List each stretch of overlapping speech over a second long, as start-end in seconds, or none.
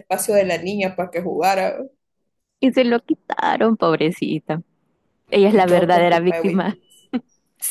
5.5-6.8